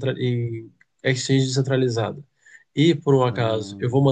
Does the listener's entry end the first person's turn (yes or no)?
no